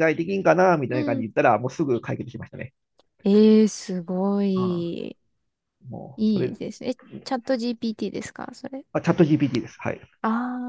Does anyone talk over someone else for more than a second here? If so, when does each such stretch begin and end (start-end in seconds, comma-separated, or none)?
none